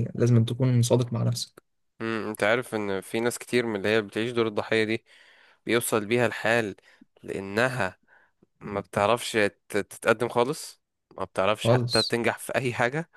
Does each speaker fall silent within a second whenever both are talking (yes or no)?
yes